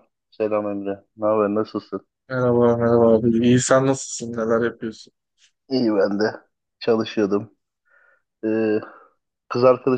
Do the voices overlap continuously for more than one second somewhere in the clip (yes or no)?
no